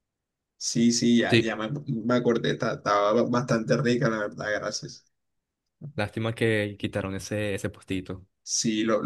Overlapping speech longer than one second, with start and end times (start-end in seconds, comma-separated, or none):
none